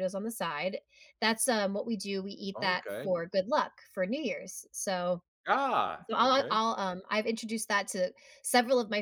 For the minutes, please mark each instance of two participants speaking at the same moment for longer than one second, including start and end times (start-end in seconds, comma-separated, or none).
none